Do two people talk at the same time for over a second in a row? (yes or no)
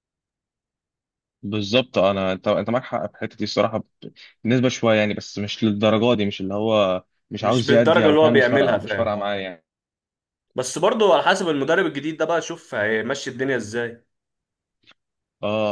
yes